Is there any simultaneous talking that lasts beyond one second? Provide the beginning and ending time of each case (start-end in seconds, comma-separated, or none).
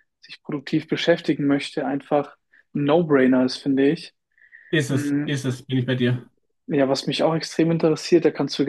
none